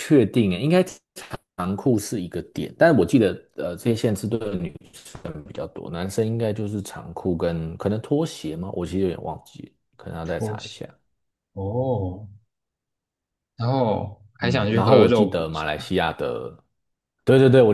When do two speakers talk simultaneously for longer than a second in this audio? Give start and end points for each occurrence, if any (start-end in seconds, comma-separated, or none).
14.4-15.9